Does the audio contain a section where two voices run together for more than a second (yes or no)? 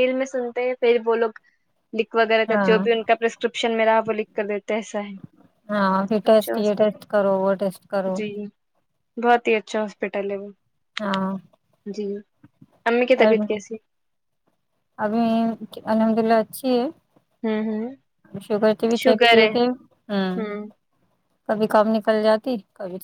no